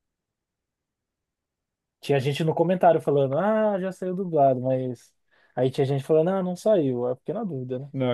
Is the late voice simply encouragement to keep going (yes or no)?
no